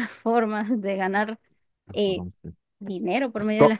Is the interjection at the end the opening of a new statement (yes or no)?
yes